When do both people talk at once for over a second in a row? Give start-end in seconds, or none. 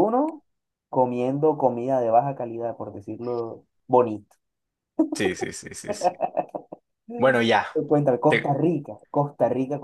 none